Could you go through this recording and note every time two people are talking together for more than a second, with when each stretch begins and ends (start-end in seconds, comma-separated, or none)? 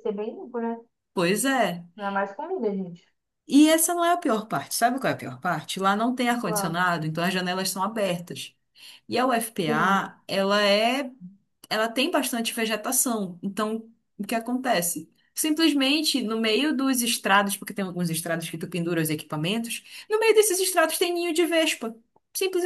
none